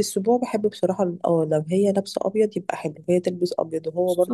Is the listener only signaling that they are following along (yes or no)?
yes